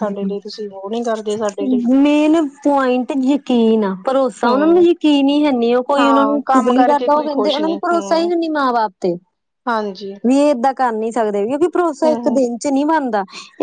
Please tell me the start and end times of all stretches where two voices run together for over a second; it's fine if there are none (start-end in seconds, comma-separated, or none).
6.0-7.6